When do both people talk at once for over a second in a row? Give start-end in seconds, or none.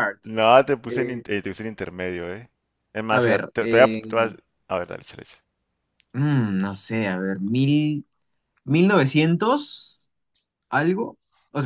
3.1-4.3